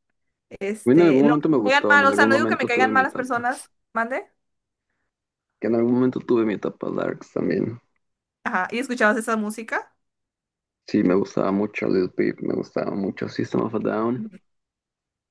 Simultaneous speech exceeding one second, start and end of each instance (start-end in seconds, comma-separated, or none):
0.8-3.5